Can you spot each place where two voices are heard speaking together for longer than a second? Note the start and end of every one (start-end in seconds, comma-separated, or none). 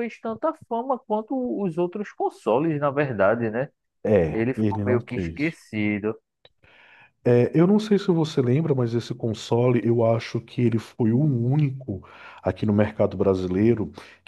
4.3-5.6